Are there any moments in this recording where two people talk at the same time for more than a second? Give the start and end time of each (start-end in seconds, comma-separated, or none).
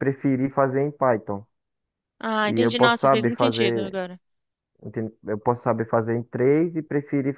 2.4-4.0